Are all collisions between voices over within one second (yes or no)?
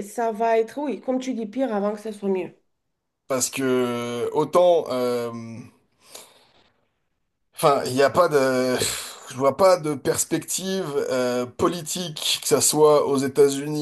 yes